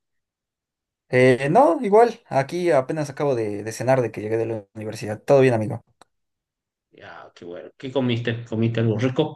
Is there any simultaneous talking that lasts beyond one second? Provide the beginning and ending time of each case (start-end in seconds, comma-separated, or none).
none